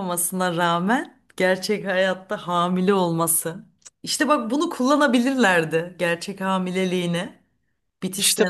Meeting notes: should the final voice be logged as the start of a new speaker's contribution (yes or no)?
yes